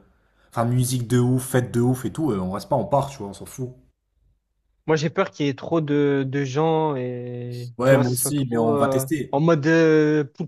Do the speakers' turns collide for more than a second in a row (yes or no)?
yes